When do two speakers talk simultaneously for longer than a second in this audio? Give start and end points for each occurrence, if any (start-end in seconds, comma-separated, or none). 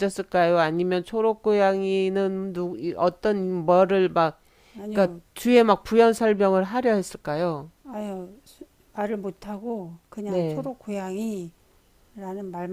none